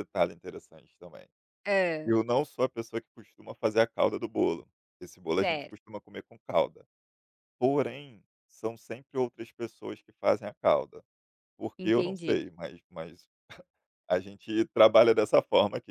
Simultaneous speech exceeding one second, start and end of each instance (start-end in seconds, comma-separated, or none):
none